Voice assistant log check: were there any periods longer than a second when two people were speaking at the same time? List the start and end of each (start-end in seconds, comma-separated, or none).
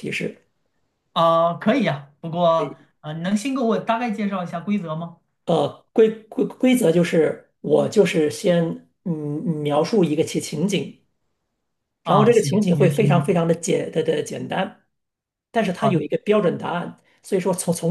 12.0-13.4